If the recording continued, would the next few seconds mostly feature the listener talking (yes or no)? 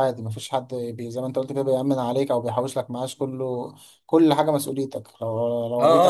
yes